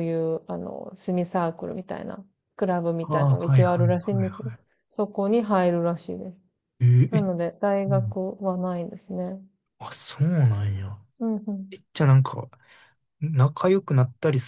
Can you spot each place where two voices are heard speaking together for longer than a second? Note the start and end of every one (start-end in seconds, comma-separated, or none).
3.0-4.5